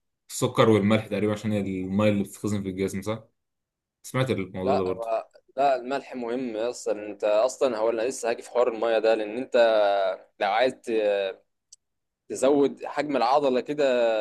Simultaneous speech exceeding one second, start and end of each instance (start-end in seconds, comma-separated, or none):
none